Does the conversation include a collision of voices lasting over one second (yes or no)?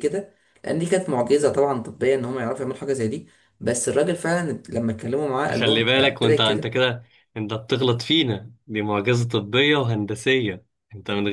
yes